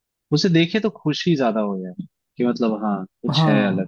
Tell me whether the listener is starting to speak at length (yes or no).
yes